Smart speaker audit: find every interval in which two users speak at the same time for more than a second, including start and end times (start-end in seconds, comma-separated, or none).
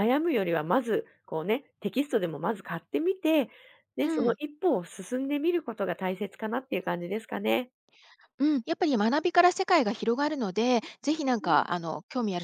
none